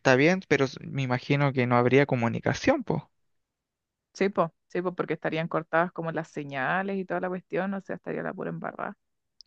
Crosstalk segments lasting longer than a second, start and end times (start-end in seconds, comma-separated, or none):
none